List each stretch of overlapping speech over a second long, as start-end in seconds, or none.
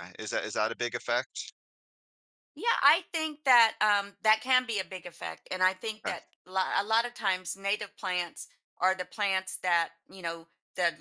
none